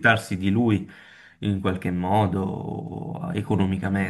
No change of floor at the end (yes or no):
no